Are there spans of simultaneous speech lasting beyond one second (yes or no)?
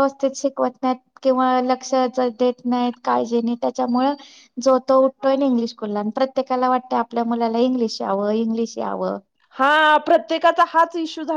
no